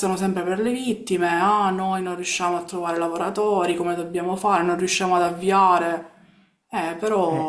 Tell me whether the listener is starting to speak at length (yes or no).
yes